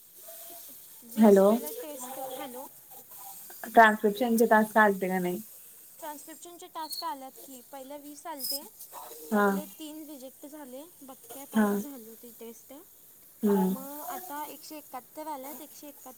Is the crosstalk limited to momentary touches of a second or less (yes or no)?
yes